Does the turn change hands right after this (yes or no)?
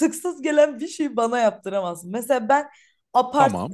no